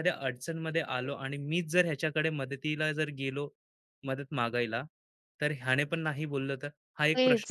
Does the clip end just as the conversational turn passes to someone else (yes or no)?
yes